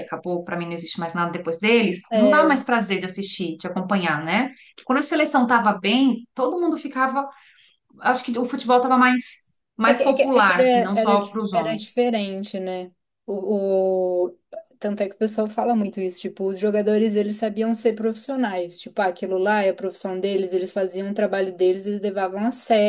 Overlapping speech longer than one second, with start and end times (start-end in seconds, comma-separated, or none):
9.8-12.0